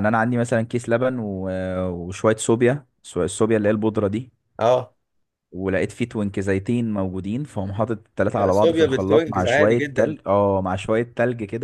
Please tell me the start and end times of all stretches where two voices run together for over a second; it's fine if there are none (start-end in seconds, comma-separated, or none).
8.3-10.2